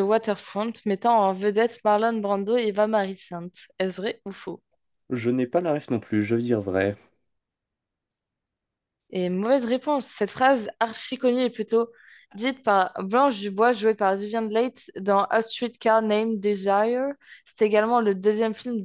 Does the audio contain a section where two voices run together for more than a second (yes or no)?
no